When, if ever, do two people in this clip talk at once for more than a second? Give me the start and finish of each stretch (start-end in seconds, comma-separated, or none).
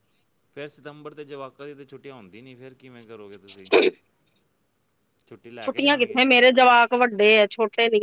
none